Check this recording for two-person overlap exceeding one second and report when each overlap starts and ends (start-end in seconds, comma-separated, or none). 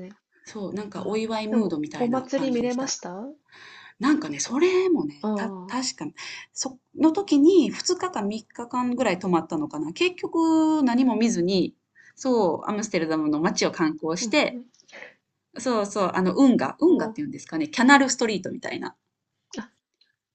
0.9-3.0